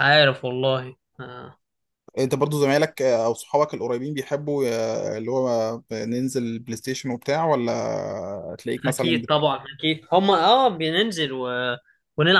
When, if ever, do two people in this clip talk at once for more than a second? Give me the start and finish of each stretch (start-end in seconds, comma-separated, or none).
none